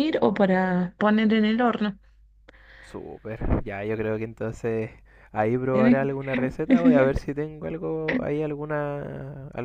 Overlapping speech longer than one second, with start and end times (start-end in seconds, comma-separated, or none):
none